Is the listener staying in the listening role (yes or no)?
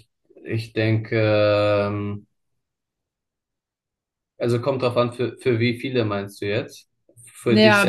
no